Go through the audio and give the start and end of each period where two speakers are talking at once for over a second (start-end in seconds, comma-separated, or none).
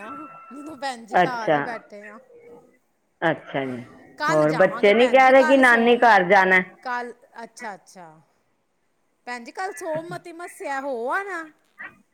4.3-6.1